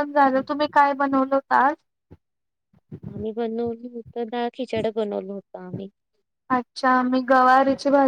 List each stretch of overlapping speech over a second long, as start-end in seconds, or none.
none